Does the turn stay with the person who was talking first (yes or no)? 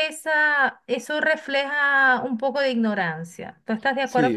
no